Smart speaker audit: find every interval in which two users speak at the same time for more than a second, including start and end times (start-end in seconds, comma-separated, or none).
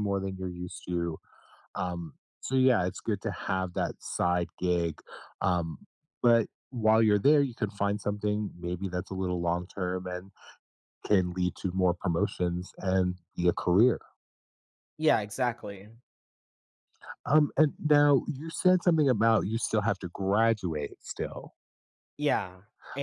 none